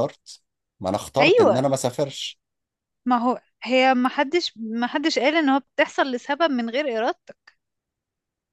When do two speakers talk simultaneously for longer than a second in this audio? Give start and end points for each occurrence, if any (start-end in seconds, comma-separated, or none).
none